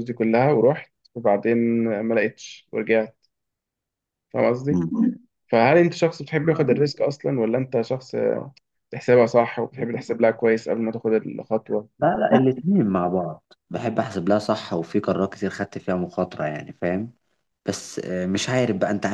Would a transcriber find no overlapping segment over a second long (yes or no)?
yes